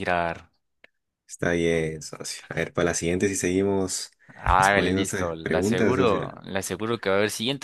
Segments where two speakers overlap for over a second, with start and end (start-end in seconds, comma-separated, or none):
4.6-6.4